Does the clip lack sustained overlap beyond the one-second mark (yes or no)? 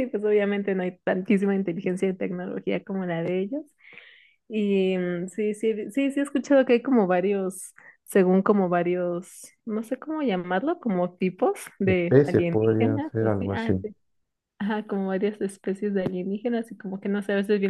no